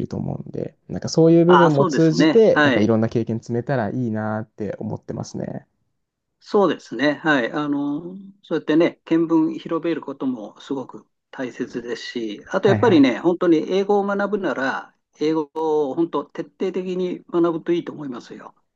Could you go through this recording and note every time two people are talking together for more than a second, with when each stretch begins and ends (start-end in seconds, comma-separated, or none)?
1.5-2.9